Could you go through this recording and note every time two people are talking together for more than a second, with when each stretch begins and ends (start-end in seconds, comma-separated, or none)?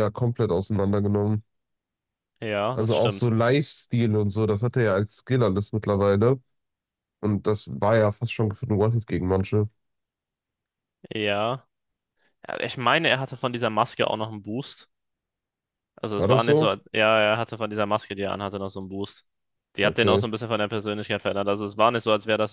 none